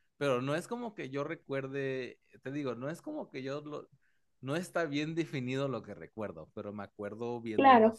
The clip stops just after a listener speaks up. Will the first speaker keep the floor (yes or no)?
yes